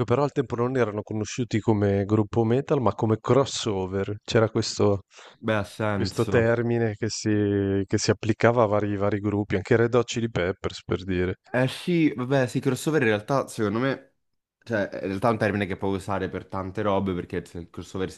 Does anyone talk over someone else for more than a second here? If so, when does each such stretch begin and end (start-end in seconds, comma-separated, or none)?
none